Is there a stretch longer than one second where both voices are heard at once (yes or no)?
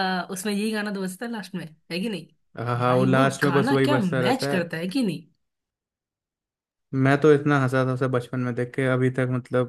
yes